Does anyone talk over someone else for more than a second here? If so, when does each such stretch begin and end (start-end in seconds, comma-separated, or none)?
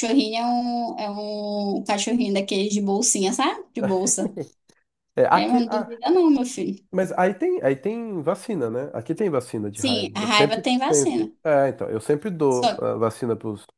9.7-11.3